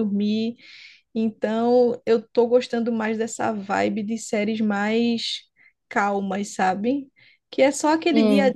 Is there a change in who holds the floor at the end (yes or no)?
no